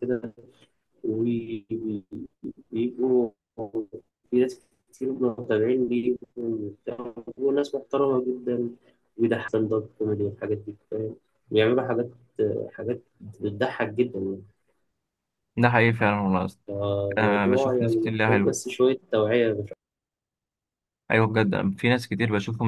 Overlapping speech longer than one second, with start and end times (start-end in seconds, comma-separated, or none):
17.2-18.5